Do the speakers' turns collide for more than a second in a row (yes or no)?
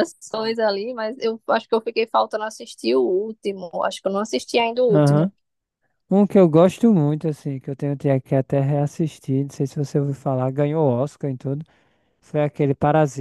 no